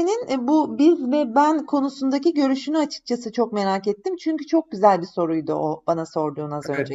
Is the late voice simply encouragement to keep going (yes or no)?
no